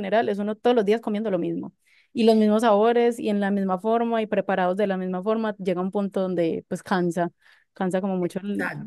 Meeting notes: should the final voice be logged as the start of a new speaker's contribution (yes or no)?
yes